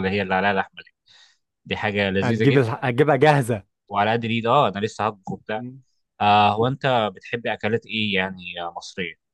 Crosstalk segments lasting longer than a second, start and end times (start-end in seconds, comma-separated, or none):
none